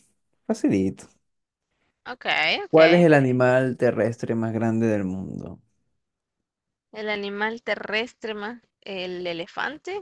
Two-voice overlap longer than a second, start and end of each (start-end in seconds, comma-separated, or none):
none